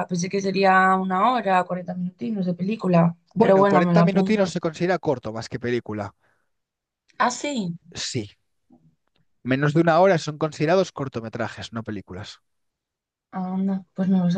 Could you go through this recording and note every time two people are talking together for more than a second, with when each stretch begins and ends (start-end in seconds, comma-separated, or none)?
3.3-4.6